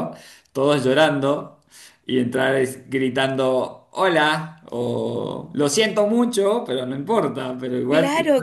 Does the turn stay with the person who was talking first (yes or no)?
no